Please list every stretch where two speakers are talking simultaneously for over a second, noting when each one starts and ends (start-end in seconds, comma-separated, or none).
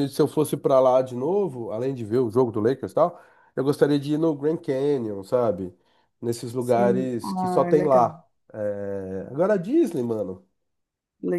6.6-8.1